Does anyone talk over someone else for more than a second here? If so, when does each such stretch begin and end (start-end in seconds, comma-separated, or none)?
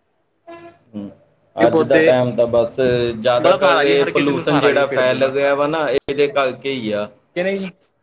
3.4-5.3